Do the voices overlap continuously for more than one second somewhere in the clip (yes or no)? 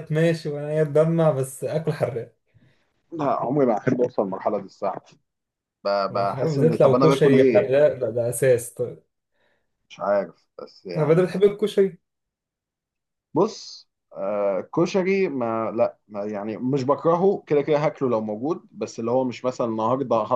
yes